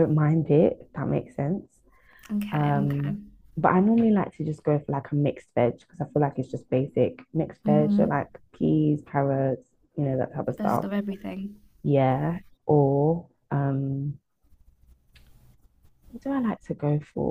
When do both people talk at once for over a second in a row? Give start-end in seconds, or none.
none